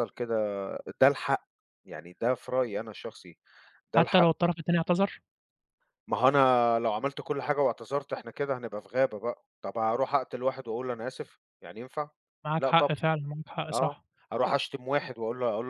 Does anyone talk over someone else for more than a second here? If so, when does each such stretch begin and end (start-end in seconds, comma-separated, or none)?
none